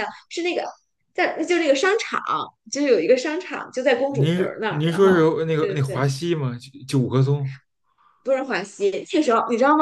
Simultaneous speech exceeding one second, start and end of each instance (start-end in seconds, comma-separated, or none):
4.1-6.1